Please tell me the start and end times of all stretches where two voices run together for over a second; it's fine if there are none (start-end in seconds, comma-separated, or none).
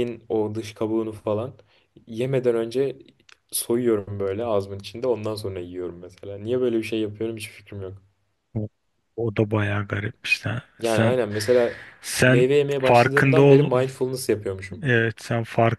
12.2-13.7